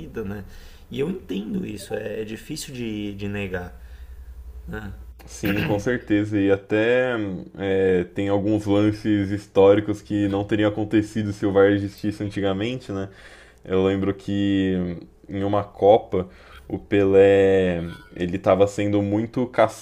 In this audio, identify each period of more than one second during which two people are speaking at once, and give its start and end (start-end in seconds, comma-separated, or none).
none